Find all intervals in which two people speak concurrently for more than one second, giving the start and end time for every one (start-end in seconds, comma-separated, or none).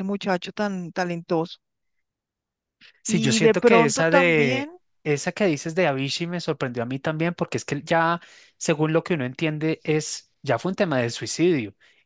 3.1-4.7